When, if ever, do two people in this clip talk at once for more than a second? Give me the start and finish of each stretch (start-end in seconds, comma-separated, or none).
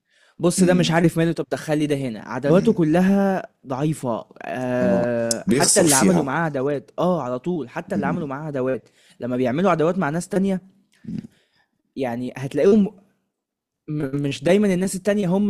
4.8-6.3